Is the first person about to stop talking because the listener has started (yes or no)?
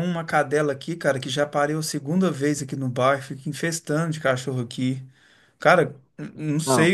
no